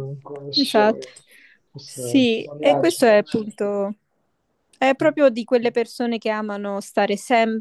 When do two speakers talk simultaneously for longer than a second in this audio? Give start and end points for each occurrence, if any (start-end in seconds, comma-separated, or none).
1.8-3.5